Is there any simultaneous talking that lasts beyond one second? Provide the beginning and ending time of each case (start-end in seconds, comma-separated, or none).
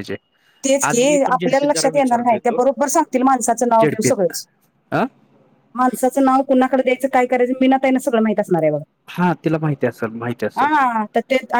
0.8-2.6